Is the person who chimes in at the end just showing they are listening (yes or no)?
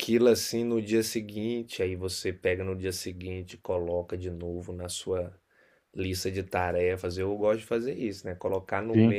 yes